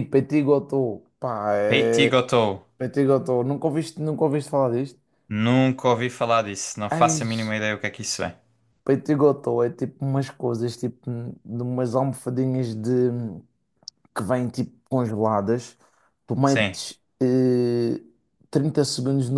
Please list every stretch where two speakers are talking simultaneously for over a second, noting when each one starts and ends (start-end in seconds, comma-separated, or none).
none